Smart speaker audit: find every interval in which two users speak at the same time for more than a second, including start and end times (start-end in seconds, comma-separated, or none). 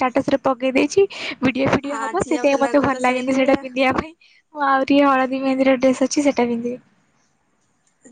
1.9-3.6